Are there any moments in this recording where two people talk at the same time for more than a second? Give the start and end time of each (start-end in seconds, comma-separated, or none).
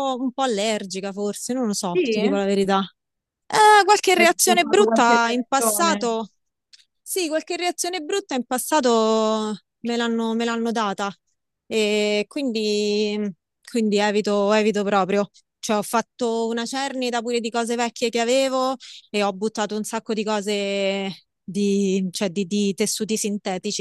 4.2-6.1